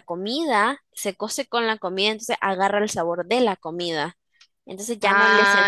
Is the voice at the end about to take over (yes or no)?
yes